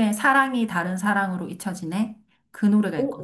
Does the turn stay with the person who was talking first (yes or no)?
no